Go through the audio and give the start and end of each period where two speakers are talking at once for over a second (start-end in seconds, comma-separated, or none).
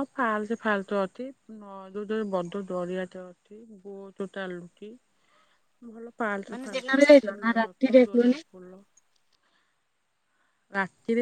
6.5-8.4